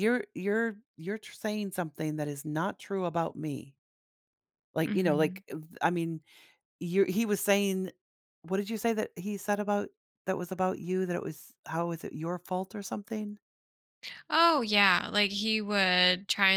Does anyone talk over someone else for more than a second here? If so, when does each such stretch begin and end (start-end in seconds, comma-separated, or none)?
none